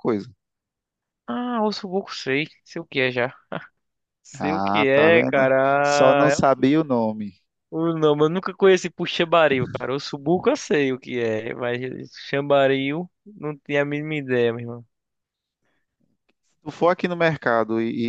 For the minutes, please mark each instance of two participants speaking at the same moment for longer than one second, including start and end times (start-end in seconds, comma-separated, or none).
4.3-6.6